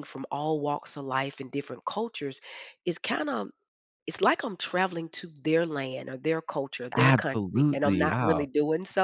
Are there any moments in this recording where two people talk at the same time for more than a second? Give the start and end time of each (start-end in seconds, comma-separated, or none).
7.0-8.5